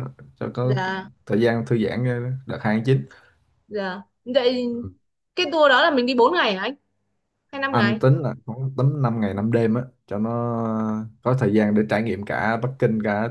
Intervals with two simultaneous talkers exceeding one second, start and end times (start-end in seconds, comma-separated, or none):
none